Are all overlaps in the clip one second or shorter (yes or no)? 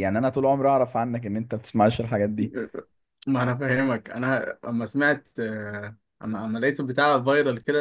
yes